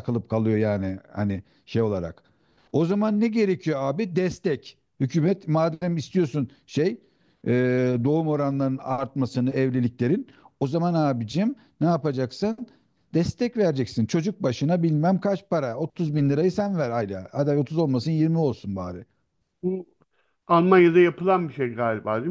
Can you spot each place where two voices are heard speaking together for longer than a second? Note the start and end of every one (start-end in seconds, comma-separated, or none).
none